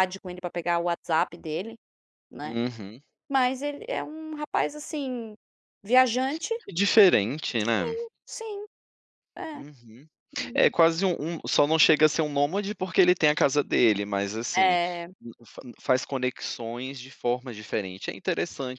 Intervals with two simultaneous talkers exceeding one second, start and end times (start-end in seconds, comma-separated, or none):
none